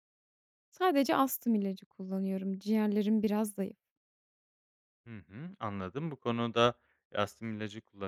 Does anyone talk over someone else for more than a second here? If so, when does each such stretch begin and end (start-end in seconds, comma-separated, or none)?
none